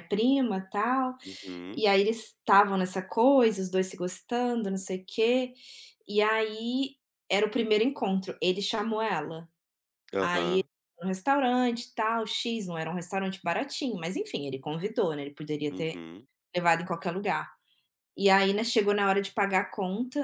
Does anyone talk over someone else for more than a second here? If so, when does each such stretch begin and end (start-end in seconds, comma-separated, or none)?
none